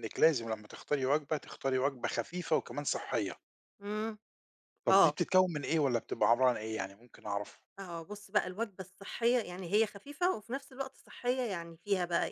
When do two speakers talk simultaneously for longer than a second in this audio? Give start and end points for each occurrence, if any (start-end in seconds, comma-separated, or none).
none